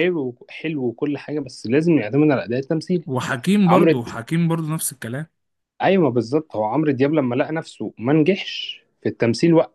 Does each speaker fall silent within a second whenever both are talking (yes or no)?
yes